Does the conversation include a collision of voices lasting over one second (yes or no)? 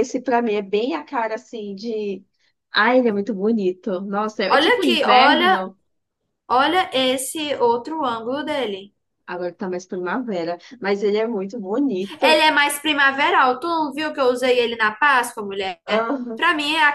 yes